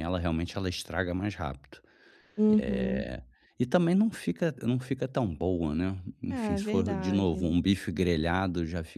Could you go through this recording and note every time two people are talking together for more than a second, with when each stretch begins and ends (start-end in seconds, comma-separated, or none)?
6.3-7.6